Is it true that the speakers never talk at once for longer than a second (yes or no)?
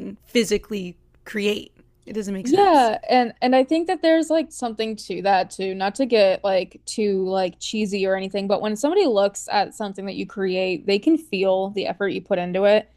yes